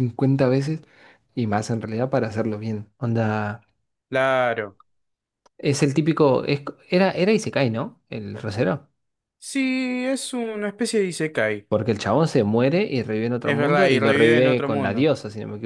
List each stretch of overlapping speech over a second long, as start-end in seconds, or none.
13.4-15.1